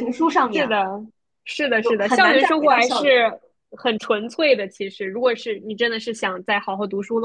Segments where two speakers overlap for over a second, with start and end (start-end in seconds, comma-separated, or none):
1.8-3.3